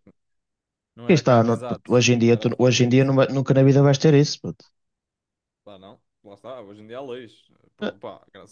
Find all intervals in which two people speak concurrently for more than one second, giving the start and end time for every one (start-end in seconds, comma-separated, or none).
1.1-3.1